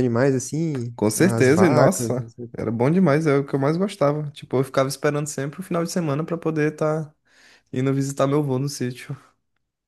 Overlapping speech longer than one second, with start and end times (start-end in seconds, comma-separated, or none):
1.0-2.5